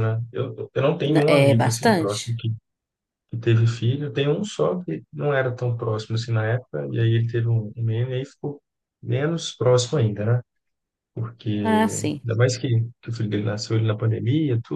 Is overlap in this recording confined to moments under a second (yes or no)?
no